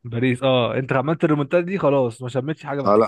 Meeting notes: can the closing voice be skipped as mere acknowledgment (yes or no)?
no